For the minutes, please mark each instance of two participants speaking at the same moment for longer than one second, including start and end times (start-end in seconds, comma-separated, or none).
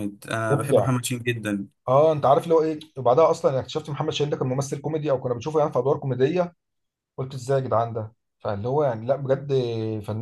none